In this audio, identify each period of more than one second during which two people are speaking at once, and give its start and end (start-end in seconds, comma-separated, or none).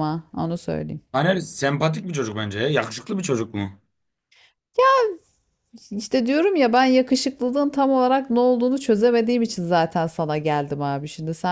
none